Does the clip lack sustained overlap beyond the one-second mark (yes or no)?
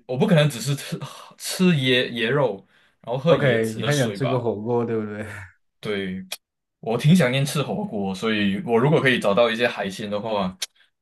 no